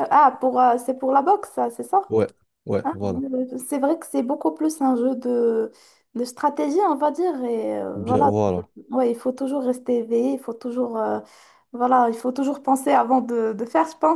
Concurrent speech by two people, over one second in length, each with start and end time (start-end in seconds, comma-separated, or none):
none